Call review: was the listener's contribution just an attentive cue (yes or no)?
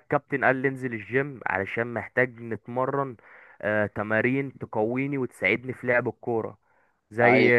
yes